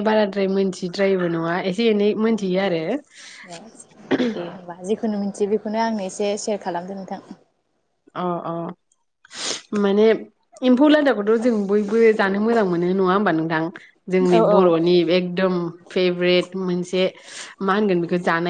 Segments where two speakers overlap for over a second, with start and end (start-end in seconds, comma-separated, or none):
none